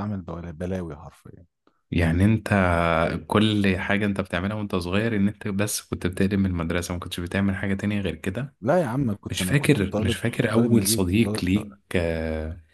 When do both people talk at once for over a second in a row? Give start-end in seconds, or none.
9.3-11.8